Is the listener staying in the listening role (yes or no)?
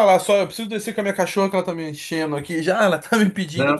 yes